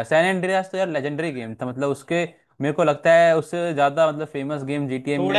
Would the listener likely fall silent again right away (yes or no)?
no